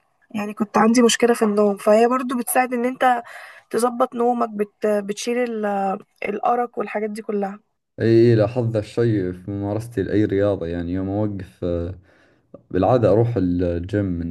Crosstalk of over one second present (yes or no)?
no